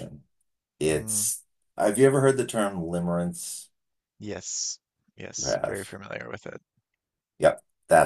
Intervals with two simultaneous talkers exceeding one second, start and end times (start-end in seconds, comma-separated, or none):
none